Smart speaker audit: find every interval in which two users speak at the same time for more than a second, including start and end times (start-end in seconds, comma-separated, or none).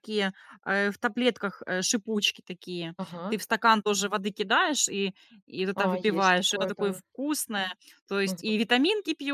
5.7-7.0